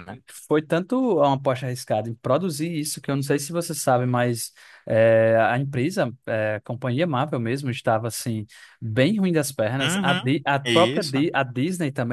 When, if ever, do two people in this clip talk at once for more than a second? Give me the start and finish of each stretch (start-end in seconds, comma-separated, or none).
9.8-11.3